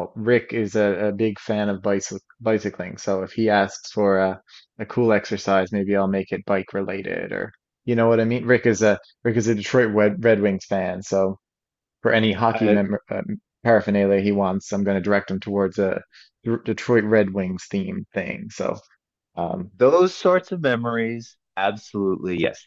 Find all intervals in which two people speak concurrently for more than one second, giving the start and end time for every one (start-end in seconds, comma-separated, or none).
none